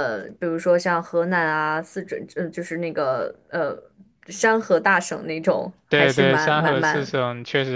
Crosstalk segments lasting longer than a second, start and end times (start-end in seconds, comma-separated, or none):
5.9-7.2